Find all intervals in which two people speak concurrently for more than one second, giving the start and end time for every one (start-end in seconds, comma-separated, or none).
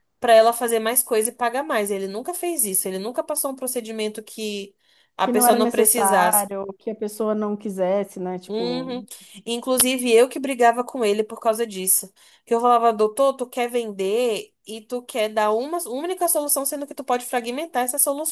5.2-6.5